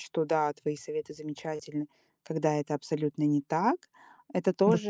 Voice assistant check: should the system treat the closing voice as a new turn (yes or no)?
no